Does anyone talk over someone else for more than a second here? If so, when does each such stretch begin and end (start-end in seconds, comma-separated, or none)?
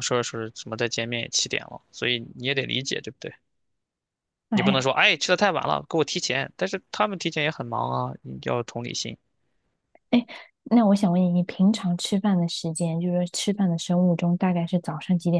none